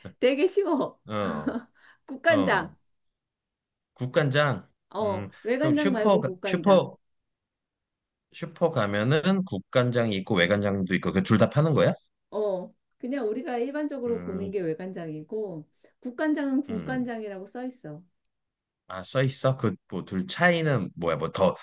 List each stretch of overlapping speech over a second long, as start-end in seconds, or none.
4.9-6.9